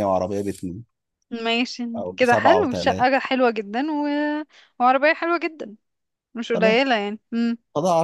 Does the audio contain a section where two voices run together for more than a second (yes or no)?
yes